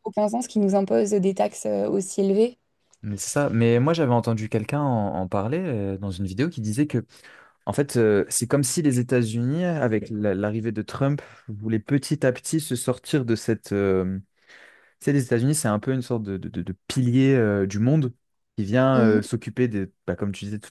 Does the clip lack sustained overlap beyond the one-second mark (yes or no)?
yes